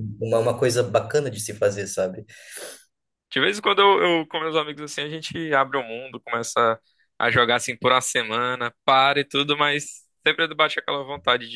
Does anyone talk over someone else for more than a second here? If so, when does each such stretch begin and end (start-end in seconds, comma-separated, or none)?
none